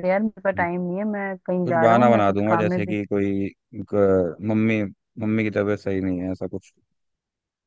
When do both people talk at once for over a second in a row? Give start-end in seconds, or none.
1.6-2.9